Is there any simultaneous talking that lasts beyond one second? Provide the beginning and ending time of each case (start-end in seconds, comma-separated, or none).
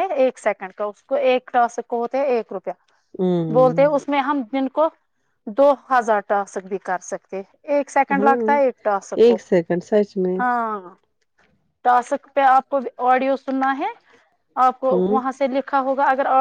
none